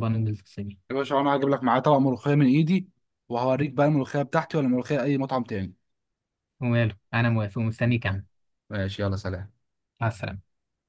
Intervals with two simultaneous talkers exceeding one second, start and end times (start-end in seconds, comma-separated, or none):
none